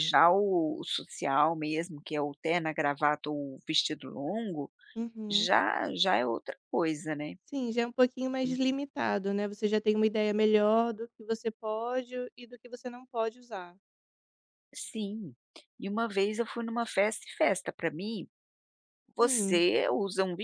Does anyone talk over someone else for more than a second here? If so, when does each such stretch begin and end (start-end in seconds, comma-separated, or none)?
none